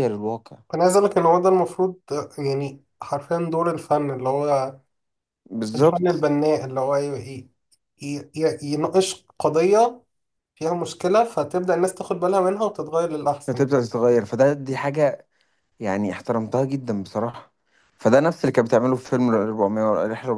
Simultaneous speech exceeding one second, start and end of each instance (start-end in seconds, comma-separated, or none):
none